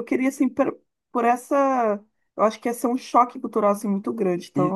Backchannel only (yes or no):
no